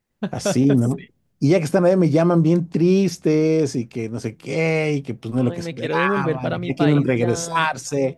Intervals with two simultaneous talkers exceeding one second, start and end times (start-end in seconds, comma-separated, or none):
5.3-7.7